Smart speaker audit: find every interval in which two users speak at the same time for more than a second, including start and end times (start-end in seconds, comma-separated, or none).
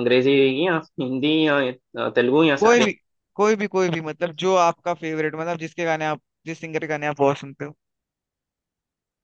none